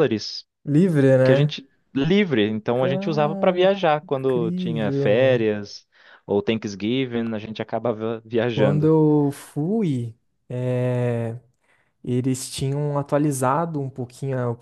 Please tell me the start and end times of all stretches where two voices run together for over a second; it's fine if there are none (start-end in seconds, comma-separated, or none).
2.7-5.5